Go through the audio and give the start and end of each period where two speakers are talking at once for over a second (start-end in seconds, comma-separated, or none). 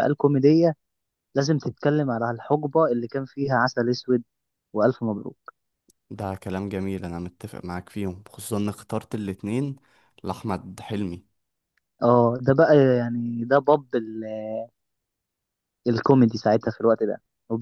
none